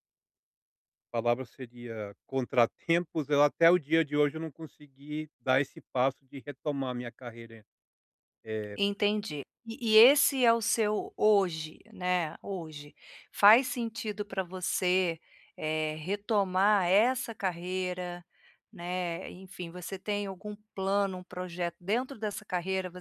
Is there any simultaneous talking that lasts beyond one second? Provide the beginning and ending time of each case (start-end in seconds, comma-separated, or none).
none